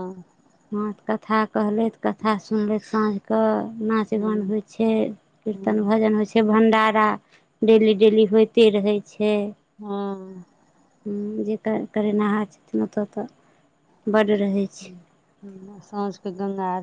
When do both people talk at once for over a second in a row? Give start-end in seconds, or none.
none